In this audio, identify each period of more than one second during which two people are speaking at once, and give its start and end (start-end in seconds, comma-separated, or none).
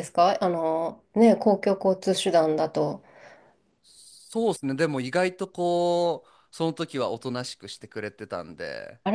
none